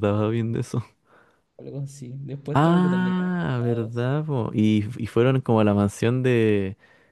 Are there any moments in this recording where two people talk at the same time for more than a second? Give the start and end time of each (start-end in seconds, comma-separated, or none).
2.5-4.1